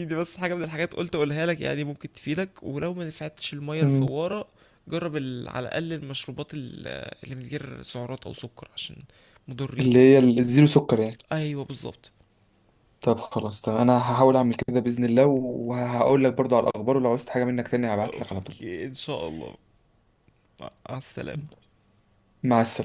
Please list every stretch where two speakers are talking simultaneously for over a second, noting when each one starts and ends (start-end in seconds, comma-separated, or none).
none